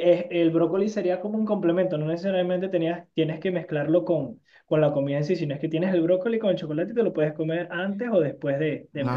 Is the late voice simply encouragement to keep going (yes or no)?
no